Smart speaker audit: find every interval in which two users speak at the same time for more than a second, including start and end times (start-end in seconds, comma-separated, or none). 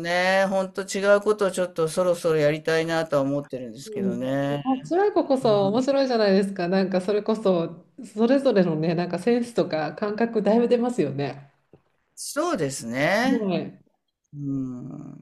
none